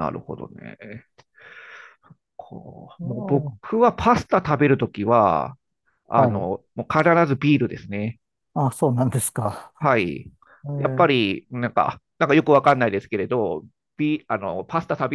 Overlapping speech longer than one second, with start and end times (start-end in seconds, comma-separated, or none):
none